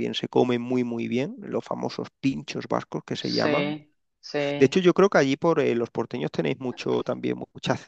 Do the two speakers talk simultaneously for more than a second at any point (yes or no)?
no